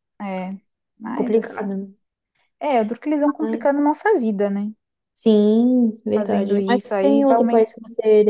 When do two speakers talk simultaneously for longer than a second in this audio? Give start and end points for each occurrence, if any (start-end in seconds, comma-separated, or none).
6.2-7.7